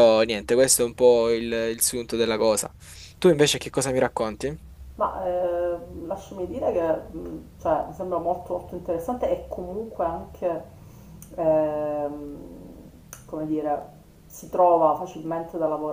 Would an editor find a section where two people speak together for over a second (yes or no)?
no